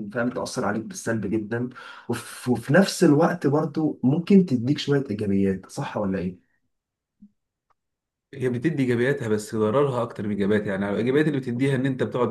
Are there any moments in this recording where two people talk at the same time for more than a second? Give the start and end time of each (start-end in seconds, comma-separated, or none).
none